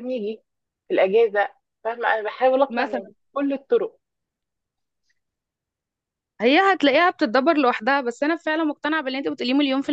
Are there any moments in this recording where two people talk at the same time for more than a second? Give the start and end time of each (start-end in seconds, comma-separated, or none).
none